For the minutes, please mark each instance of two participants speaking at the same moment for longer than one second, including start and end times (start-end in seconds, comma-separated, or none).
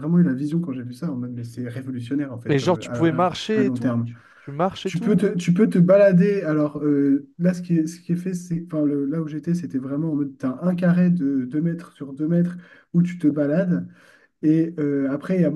2.5-4.1